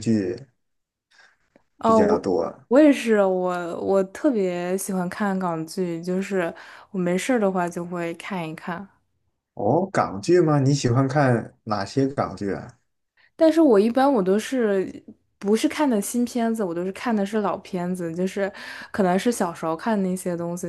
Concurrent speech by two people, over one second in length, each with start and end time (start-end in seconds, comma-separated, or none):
none